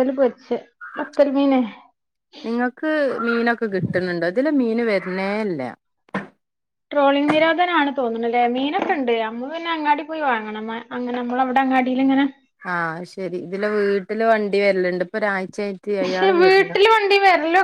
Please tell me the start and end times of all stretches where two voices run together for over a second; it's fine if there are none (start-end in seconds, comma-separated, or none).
none